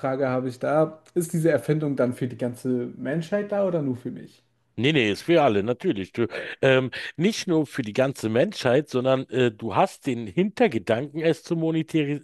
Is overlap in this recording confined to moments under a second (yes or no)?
yes